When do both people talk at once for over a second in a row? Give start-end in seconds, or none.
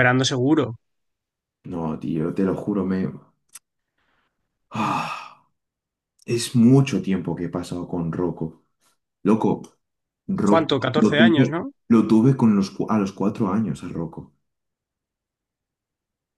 10.4-11.7